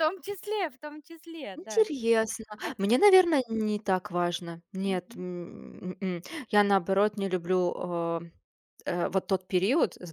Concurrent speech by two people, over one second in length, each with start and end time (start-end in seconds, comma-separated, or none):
none